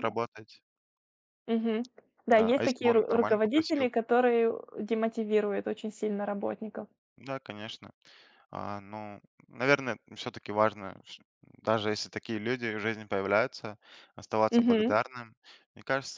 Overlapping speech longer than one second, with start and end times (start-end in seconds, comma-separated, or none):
2.3-3.9